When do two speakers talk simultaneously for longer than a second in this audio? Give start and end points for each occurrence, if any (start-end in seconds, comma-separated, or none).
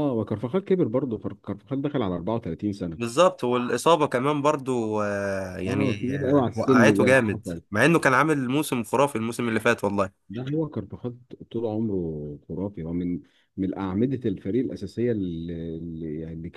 5.7-7.2